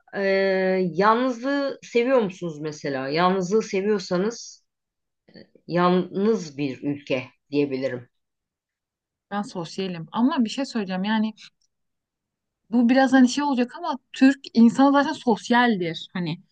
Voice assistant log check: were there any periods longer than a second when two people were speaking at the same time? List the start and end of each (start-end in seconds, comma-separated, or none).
none